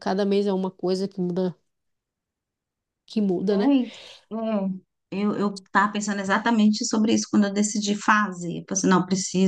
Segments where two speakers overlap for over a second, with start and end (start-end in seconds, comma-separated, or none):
none